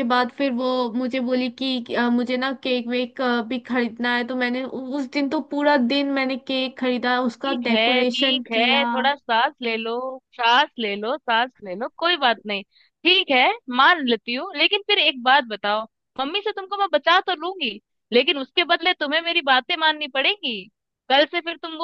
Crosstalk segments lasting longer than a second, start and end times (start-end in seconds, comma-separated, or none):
7.4-8.8